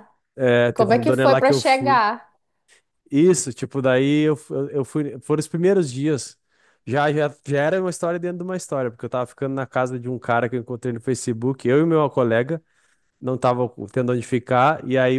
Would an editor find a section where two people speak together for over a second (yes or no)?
yes